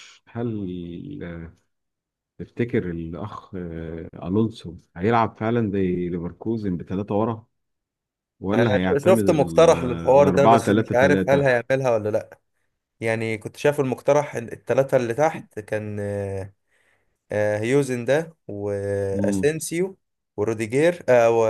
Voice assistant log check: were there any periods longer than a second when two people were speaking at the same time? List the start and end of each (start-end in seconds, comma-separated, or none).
8.5-11.5